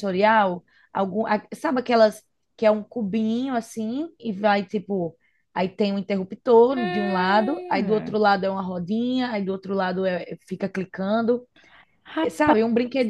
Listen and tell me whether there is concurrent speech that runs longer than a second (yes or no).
yes